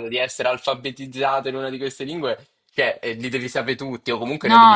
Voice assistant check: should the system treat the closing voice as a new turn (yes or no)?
yes